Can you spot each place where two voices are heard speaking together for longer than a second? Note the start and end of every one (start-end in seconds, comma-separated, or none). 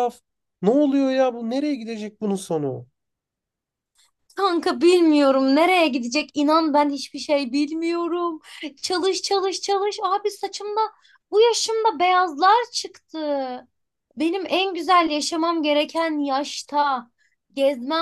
none